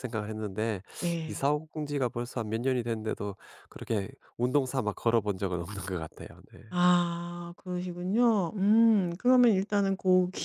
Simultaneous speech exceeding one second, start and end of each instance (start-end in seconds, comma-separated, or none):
none